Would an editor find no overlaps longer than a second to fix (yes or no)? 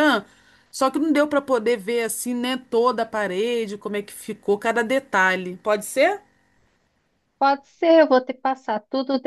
yes